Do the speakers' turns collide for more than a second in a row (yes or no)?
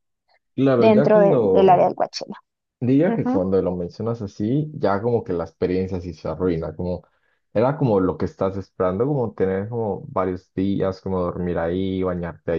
yes